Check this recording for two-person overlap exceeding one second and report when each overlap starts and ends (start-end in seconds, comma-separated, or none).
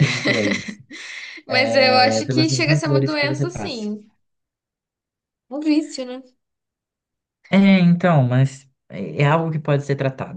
1.8-3.9